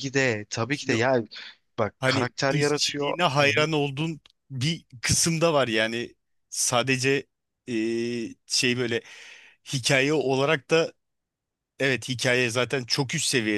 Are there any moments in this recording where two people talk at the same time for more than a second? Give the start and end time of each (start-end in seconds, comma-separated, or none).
2.0-3.7